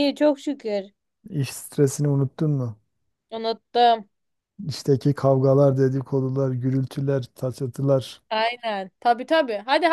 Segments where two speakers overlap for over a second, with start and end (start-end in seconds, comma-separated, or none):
none